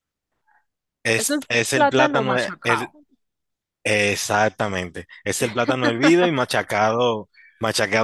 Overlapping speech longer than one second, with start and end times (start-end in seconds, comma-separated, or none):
1.2-2.9